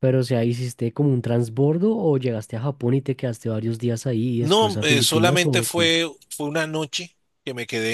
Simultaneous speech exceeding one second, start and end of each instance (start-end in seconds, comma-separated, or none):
4.4-5.9